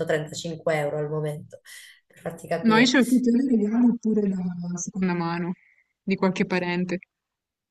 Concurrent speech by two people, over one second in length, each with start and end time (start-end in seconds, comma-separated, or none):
none